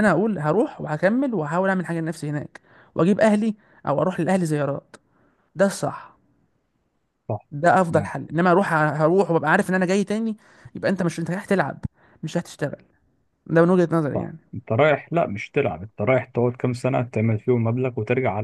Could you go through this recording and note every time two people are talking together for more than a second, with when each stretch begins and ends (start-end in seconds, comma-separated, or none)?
none